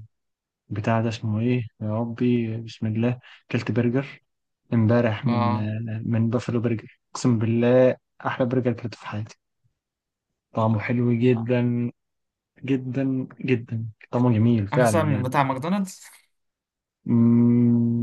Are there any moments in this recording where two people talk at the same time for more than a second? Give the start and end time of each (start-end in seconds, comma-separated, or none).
none